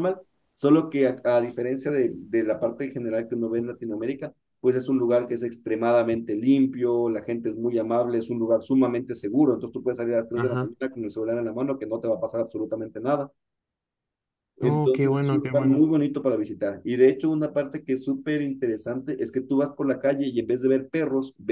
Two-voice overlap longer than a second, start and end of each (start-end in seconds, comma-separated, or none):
14.6-15.9